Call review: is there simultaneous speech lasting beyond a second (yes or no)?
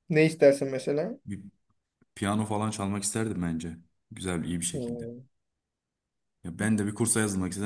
no